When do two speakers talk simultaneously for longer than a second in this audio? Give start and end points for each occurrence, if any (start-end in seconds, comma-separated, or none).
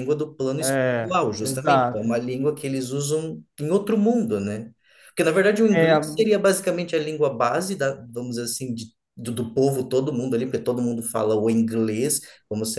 0.7-2.1